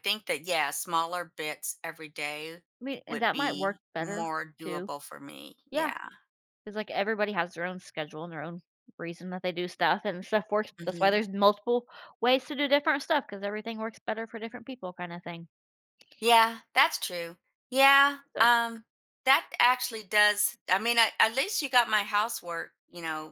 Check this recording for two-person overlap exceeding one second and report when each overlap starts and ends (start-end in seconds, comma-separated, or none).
3.1-4.9